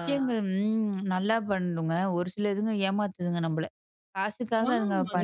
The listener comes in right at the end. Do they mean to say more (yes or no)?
yes